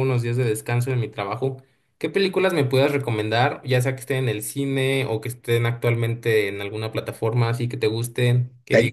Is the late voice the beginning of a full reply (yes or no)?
no